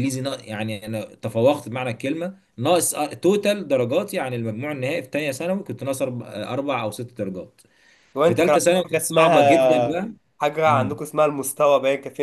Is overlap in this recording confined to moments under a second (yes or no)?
no